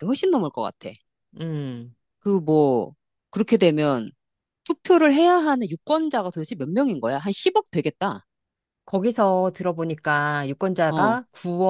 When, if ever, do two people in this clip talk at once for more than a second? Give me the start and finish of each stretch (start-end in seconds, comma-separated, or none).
none